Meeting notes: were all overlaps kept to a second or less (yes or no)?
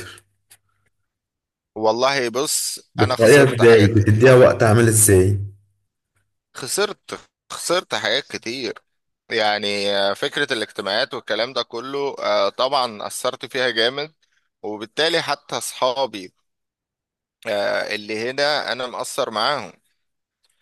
no